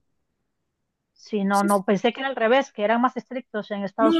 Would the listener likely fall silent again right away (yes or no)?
no